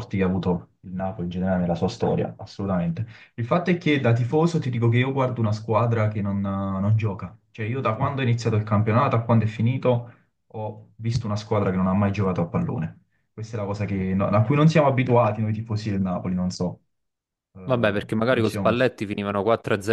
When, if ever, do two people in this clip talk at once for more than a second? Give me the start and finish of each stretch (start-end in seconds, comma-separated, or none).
17.6-18.9